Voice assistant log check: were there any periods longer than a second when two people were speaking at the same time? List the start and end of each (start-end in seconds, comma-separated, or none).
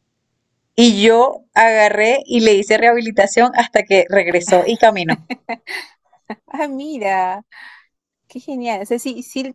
none